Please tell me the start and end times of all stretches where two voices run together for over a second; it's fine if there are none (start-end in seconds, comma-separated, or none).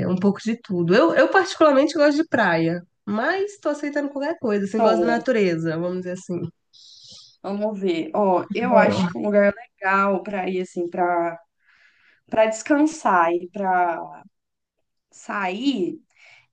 none